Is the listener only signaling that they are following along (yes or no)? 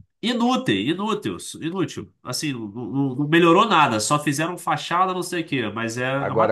no